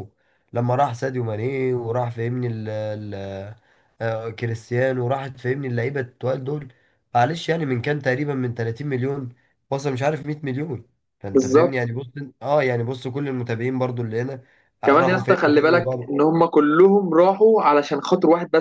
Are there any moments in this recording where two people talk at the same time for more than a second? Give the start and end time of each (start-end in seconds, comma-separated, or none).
14.8-16.1